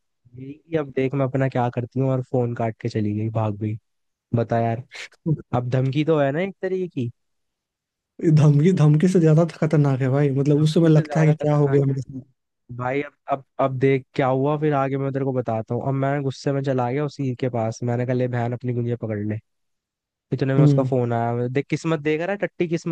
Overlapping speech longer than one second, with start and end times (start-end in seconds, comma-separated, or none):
10.4-11.9